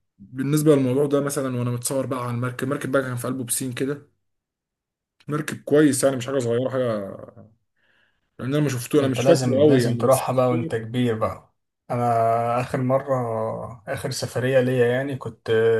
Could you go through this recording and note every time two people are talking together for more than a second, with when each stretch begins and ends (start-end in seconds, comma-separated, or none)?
9.0-10.2